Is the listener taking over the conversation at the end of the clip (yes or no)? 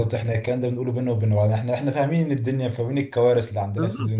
yes